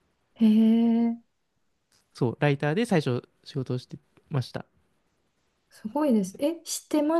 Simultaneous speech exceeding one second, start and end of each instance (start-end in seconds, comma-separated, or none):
none